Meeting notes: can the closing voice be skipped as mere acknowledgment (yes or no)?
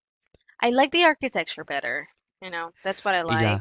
no